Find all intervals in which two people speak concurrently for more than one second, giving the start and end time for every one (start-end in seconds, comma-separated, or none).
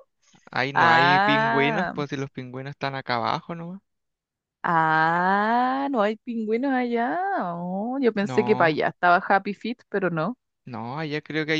0.7-1.9